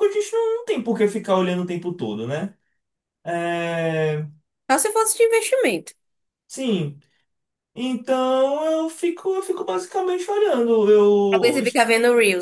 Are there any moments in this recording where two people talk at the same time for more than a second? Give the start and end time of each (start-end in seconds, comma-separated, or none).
none